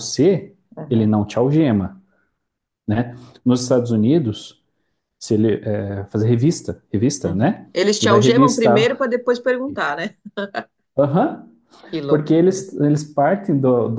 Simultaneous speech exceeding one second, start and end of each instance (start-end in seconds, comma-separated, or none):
7.2-9.0